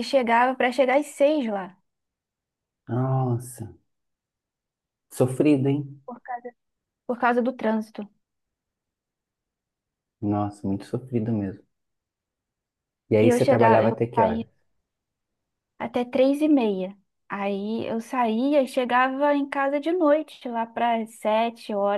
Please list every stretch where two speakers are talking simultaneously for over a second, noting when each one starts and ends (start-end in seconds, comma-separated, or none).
13.2-14.4